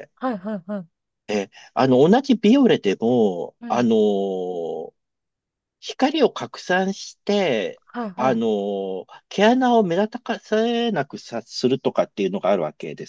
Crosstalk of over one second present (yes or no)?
no